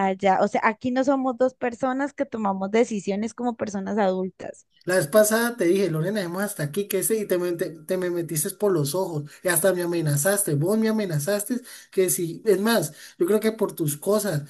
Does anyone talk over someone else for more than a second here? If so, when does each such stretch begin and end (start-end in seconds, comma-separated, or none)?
none